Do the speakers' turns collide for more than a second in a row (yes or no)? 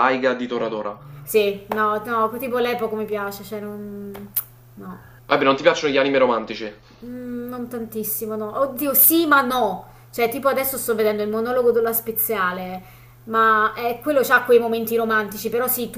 no